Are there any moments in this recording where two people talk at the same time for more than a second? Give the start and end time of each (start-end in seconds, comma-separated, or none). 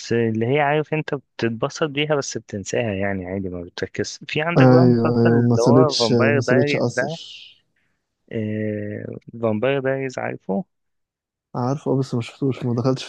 4.6-7.1